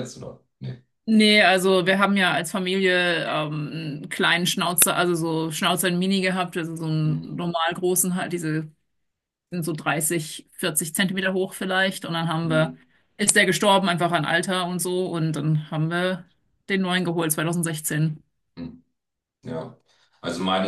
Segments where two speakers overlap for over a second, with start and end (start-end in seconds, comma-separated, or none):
none